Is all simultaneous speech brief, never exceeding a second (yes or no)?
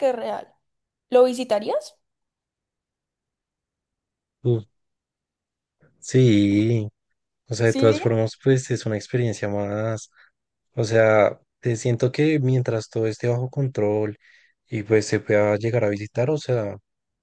yes